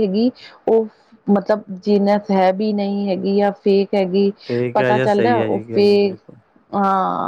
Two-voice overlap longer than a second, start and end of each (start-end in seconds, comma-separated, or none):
4.7-6.2